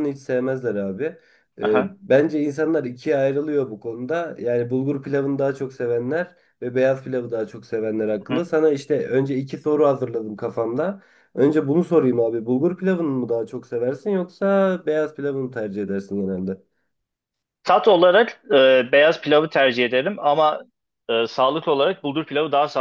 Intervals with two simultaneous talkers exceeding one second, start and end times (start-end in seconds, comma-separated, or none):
none